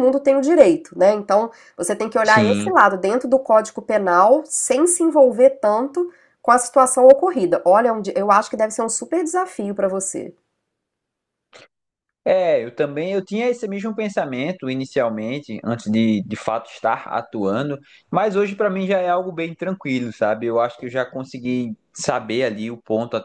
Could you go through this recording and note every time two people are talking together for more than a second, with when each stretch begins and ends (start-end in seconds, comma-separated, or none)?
none